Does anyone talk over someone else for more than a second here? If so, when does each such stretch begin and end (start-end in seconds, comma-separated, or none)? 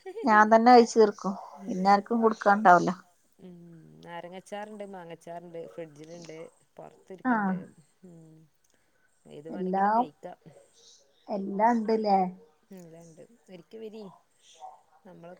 none